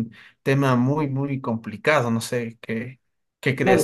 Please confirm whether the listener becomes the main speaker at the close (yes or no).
yes